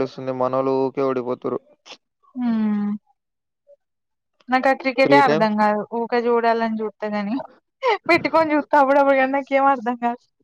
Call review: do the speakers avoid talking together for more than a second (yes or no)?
yes